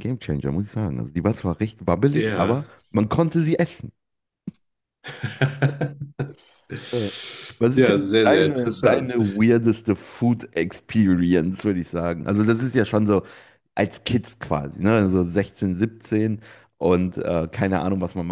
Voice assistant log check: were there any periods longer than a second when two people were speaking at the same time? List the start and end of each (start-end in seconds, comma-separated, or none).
7.7-9.1